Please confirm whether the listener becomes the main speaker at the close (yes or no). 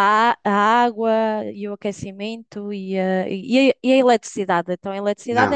yes